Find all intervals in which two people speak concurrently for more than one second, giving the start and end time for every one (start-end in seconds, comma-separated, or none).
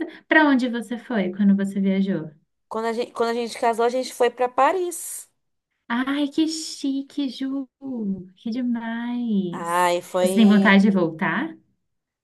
9.5-10.9